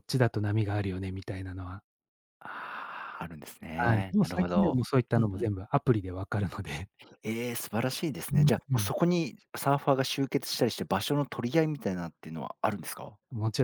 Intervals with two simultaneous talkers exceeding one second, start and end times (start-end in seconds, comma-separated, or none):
3.8-5.5